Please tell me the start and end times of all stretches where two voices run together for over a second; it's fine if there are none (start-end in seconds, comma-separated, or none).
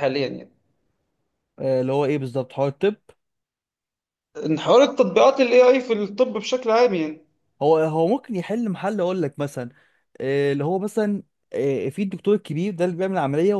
none